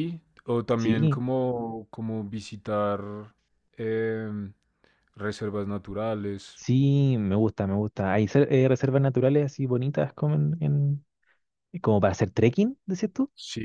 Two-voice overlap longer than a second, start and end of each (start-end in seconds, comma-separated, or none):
none